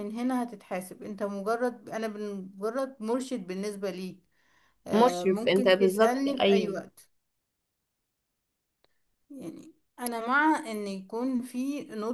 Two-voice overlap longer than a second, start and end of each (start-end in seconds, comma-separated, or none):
4.9-6.8